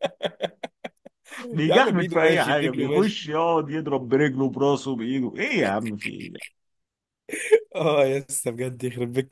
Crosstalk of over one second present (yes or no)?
yes